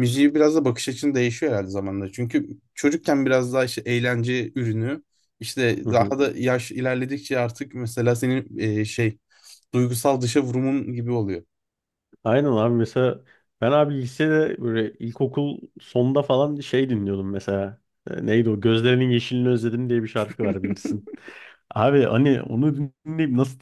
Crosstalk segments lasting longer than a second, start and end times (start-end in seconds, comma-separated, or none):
none